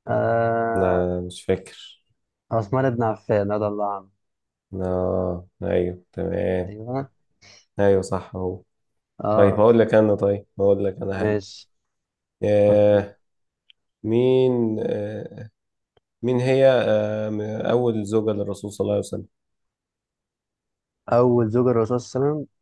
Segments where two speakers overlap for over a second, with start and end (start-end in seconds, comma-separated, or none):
none